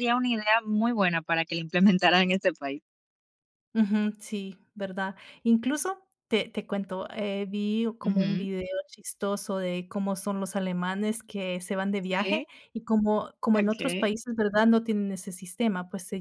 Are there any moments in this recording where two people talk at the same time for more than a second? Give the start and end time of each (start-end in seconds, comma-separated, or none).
none